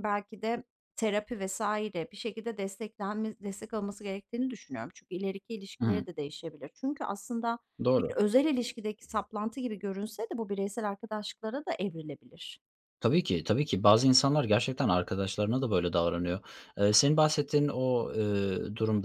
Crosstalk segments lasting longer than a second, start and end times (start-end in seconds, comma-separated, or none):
none